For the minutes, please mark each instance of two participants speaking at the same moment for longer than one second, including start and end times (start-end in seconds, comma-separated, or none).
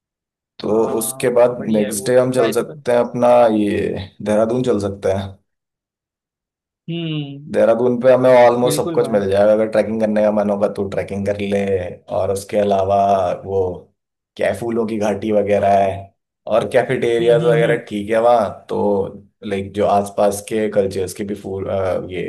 0.7-2.8